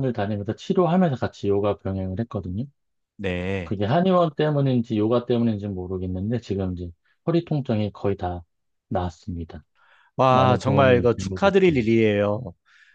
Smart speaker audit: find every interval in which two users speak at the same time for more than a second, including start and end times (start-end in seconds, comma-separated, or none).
10.3-11.8